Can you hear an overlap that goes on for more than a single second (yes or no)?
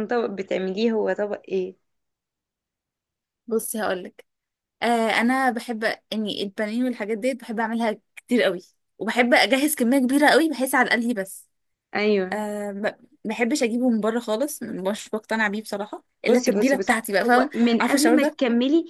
yes